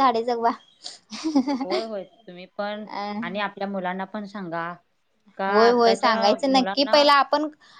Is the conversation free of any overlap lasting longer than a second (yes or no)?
no